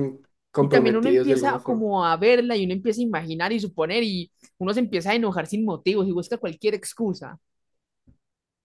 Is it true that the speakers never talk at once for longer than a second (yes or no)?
no